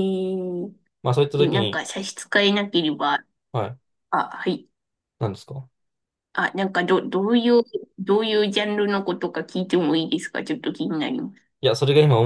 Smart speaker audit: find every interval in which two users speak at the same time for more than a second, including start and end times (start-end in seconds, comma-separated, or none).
none